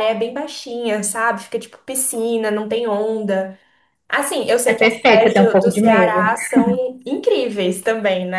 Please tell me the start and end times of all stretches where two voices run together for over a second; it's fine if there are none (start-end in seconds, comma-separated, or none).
4.7-6.3